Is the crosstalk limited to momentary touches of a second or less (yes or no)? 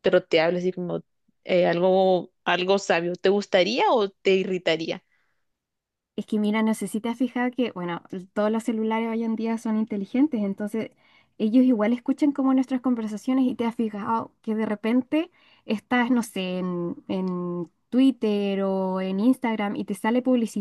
yes